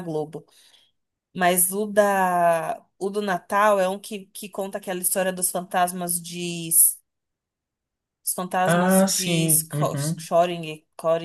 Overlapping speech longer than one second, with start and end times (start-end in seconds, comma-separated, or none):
8.7-10.3